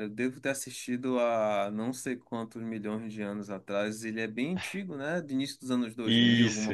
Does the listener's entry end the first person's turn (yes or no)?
yes